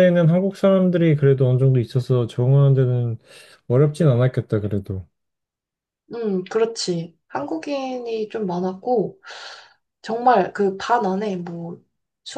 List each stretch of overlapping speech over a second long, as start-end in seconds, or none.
none